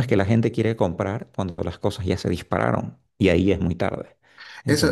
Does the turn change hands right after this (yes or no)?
yes